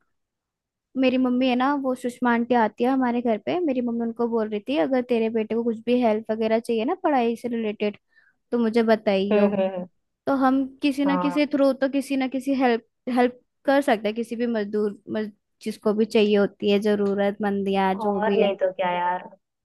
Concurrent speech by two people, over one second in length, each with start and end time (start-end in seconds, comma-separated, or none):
none